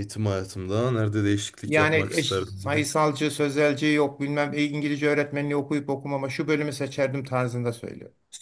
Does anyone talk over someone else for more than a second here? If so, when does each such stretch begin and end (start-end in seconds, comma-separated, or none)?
1.7-2.9